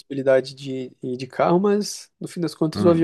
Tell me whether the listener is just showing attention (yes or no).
yes